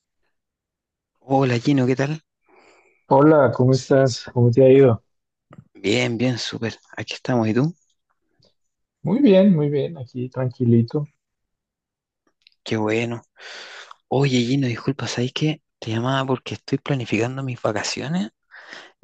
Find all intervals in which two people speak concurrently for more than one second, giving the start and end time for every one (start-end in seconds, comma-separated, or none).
none